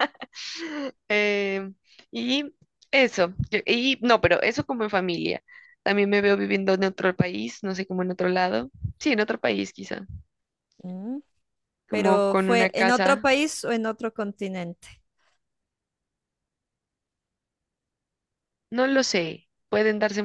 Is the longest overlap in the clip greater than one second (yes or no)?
yes